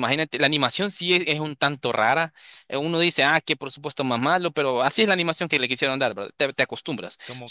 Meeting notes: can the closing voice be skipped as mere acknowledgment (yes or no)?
yes